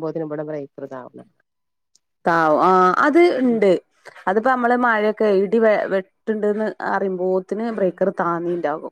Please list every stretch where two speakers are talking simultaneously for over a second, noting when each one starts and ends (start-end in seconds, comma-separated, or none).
none